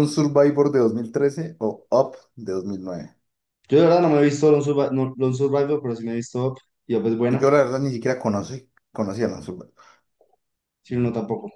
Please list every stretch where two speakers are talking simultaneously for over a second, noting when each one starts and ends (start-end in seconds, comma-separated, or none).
none